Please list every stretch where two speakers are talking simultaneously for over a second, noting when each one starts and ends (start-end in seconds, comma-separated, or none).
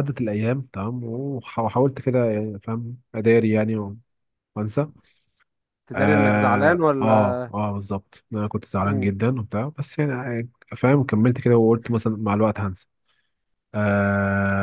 5.9-7.4